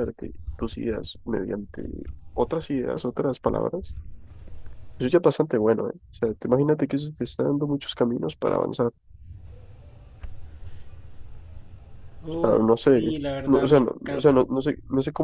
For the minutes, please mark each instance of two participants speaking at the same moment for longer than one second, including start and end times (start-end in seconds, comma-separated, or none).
12.3-14.4